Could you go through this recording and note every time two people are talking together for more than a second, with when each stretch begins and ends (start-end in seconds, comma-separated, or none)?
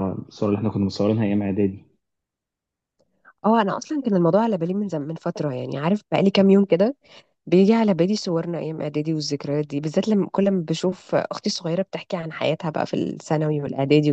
none